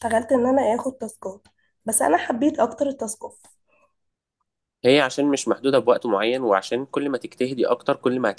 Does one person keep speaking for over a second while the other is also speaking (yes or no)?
no